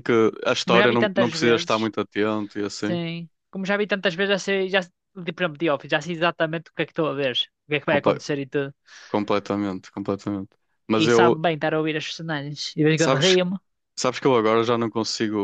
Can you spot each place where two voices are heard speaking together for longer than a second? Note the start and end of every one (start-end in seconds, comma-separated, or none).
0.6-1.9